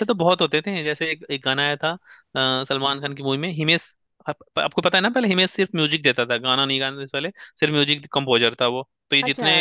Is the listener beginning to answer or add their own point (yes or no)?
no